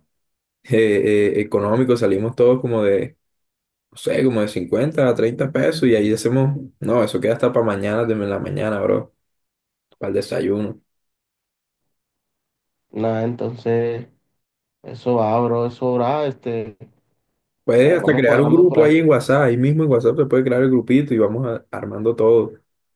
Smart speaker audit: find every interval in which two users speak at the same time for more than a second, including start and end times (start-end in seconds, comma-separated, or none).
17.7-18.9